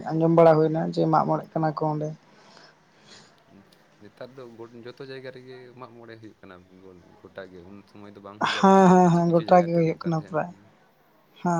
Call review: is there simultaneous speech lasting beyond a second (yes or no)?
yes